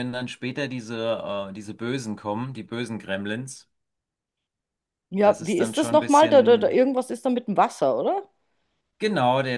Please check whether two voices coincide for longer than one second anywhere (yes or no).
yes